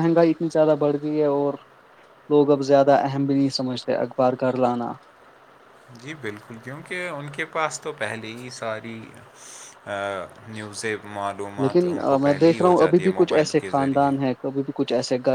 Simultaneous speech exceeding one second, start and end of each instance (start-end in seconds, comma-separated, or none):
11.6-14.1